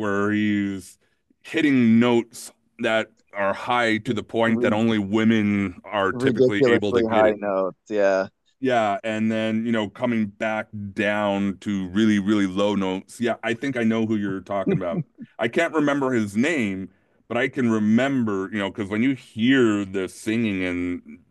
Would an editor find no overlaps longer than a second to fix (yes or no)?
no